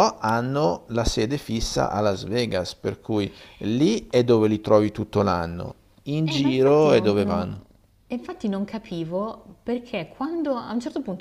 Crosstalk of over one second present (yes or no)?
yes